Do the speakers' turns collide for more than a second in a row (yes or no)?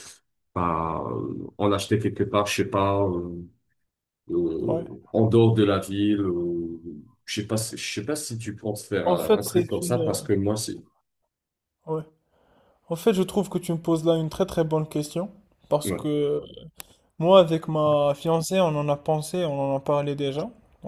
yes